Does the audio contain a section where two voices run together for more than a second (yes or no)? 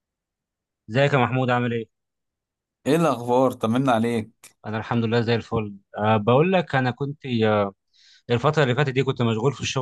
no